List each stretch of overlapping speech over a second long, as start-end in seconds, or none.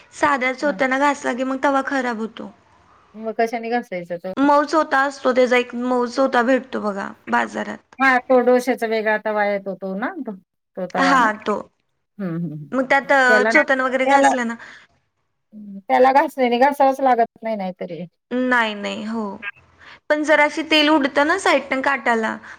12.7-14.3